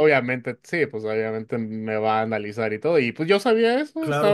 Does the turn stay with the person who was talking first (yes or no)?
yes